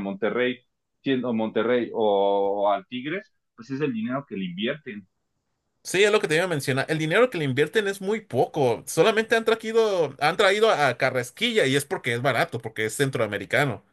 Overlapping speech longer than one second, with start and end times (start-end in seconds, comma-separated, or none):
none